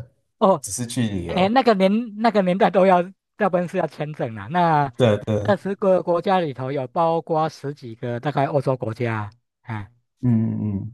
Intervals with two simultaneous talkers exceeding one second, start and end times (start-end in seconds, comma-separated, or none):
none